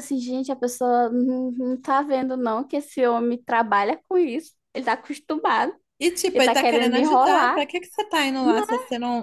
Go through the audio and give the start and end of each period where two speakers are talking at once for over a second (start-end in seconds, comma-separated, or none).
6.3-7.6